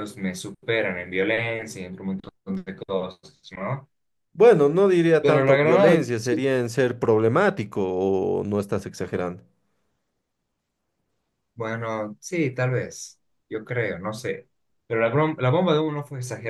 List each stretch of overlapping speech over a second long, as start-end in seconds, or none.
5.2-6.4